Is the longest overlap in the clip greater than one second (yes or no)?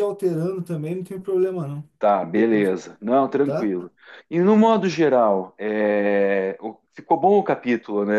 no